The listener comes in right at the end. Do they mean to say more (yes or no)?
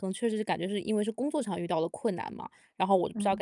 no